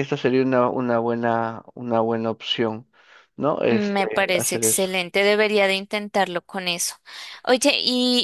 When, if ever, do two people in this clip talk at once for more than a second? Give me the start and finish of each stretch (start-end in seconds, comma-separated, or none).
3.7-4.9